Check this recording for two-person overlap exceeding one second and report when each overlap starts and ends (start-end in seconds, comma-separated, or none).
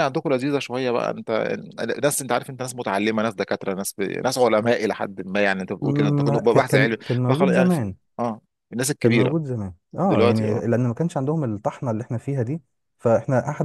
5.8-7.9